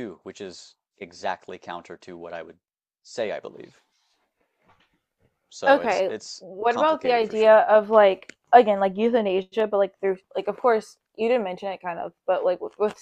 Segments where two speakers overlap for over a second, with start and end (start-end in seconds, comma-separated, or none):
5.7-7.6